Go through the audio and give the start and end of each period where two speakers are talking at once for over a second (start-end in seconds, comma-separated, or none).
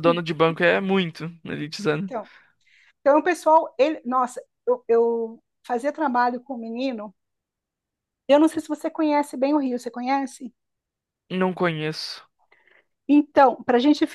none